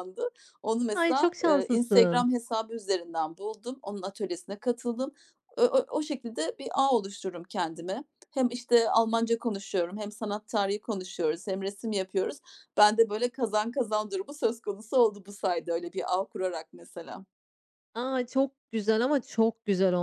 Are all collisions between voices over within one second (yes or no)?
no